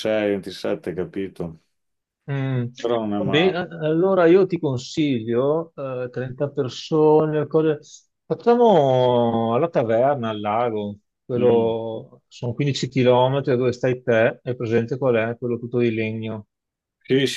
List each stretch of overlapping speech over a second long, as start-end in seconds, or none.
none